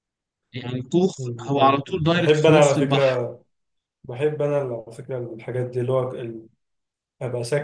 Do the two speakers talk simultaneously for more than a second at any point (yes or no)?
yes